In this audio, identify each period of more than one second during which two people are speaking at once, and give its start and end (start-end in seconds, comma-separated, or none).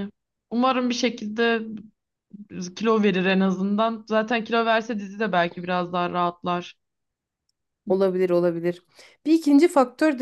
none